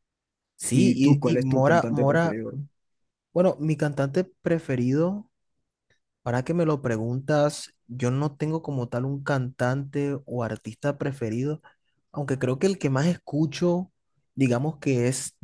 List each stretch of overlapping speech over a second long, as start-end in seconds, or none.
0.7-2.4